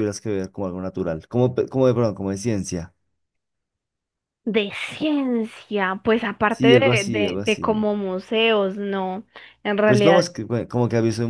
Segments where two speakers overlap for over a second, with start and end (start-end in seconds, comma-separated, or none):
6.5-7.8